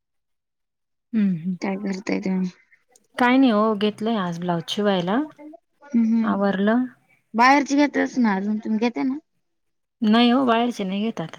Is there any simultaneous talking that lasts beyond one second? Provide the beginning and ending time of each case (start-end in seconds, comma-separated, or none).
none